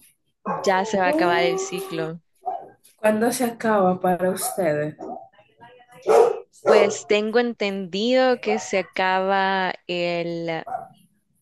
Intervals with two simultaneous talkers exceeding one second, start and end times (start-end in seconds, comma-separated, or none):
0.7-2.1